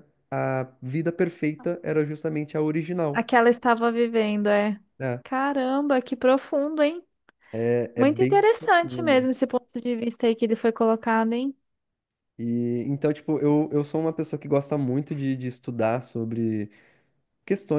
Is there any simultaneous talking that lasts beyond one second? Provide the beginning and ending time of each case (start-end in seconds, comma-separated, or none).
8.0-9.3